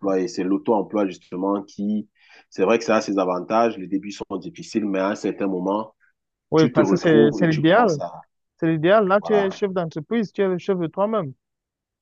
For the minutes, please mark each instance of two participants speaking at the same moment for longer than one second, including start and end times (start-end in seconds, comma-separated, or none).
6.5-8.0